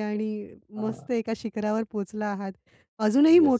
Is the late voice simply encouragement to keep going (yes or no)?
yes